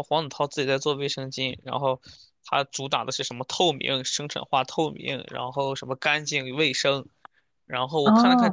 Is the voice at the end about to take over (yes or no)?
yes